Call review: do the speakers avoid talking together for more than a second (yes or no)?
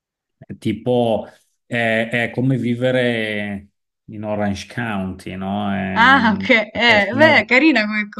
no